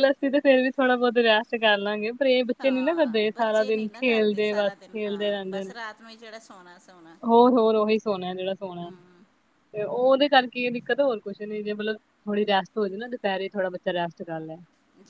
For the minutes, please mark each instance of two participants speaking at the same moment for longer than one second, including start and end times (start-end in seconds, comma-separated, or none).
2.6-4.0